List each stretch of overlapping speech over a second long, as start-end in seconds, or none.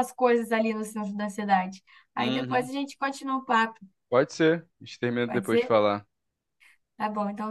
none